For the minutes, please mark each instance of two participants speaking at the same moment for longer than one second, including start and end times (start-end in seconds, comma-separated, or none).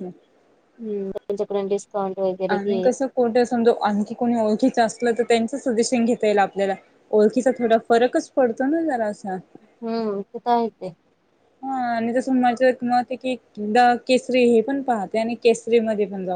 none